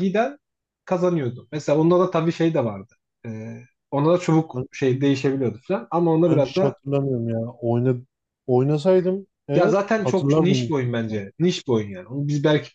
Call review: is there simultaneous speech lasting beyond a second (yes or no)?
yes